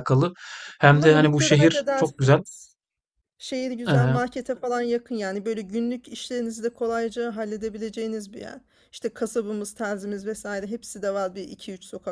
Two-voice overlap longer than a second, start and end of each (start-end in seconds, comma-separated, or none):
0.9-2.4